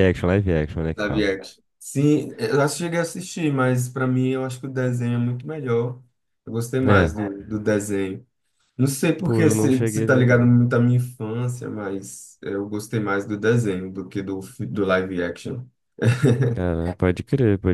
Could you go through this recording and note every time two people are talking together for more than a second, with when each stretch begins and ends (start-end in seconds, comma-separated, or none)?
9.2-10.5